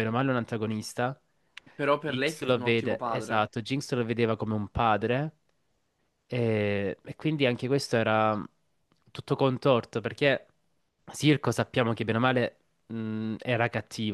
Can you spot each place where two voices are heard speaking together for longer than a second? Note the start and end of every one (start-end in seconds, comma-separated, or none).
2.0-3.5